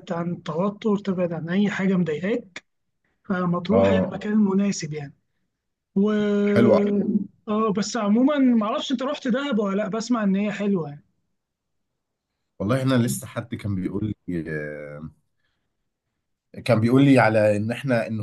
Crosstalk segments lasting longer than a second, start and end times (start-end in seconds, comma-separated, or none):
none